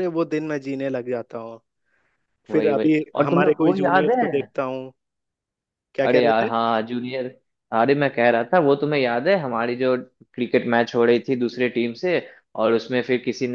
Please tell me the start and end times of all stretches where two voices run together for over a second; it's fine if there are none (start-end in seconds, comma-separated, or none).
2.5-4.5